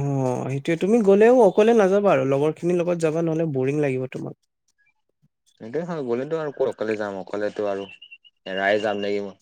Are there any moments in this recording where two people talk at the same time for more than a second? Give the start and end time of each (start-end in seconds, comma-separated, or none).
none